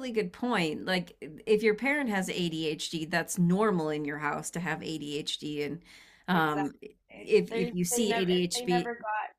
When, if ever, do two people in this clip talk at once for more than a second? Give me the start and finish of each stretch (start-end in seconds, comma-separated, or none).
7.5-8.9